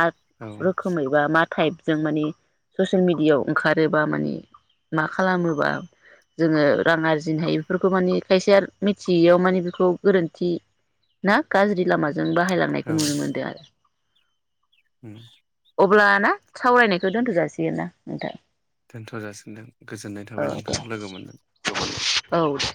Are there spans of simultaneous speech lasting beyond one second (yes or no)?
no